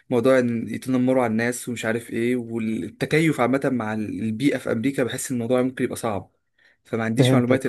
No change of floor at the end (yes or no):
no